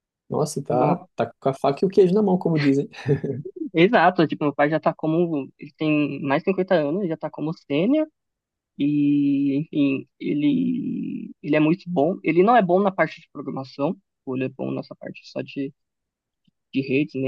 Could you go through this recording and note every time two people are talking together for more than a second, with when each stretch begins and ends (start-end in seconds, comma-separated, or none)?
none